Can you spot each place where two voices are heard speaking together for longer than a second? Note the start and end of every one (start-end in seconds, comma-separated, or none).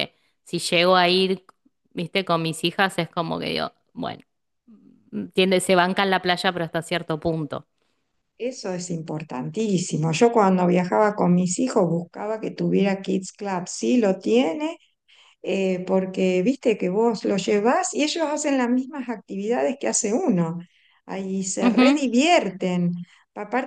none